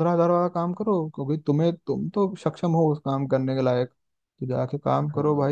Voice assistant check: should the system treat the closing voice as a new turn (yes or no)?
no